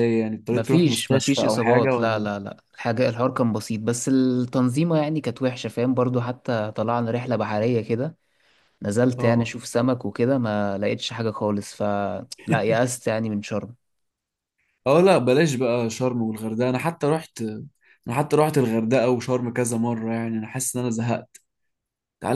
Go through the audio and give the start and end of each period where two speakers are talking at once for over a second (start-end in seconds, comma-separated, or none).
0.5-2.3